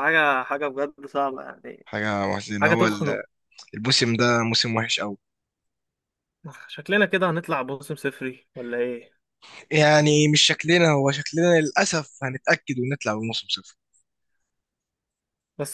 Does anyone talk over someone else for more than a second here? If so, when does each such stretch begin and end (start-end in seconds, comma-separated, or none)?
none